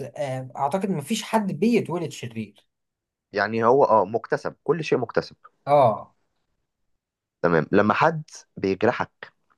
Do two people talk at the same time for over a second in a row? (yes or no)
no